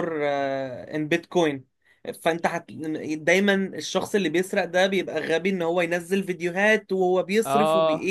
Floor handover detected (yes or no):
no